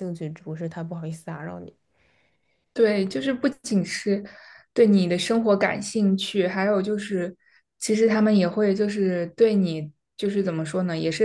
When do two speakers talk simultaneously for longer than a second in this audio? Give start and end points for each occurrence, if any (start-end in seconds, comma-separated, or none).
none